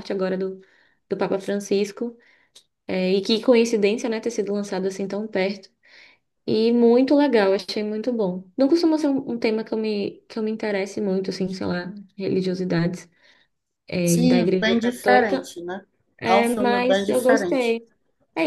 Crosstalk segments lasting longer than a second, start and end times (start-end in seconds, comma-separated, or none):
14.0-15.5, 16.3-17.8